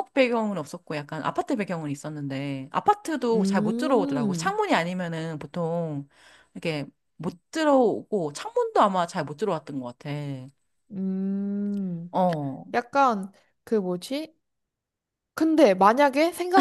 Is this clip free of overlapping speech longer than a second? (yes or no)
no